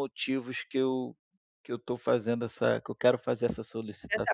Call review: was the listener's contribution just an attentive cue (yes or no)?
no